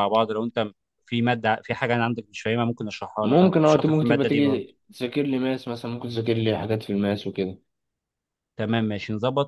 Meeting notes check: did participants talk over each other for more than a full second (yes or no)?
yes